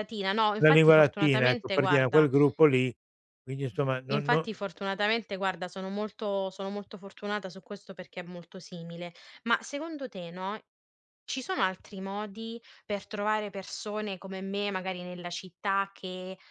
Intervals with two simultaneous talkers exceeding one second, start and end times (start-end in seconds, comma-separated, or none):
0.6-2.3